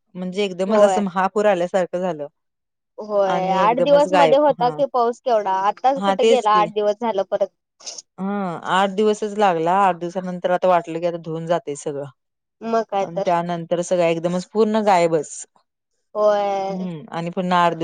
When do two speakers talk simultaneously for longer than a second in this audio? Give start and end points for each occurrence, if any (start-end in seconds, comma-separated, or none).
3.3-4.8